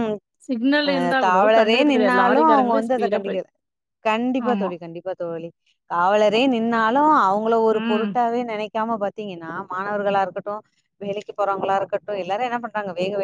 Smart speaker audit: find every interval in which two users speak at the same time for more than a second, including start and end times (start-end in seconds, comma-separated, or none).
0.9-3.4